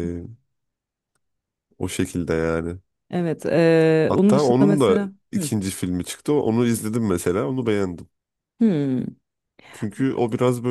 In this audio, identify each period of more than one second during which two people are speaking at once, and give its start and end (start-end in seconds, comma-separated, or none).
4.1-5.5